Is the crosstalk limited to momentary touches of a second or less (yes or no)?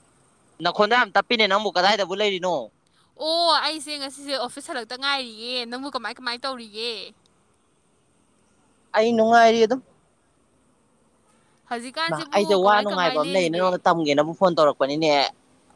no